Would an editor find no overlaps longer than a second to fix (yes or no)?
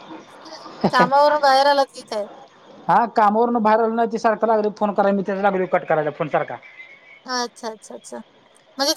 yes